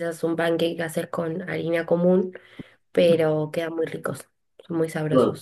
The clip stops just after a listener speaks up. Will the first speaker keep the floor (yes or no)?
no